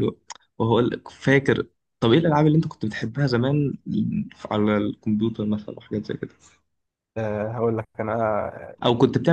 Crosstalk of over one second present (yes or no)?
no